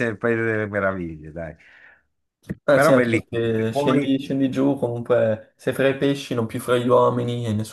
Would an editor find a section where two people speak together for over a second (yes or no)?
yes